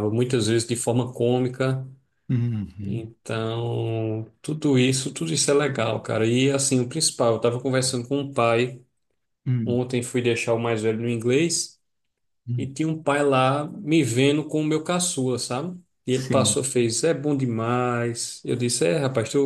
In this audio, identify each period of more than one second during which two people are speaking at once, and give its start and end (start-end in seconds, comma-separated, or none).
none